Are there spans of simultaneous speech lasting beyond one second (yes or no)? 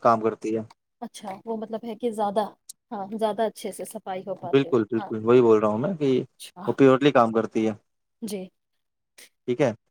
no